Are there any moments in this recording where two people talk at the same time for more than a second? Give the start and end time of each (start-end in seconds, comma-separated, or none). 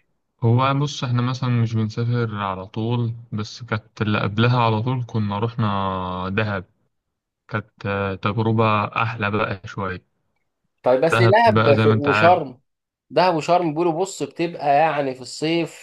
11.1-12.4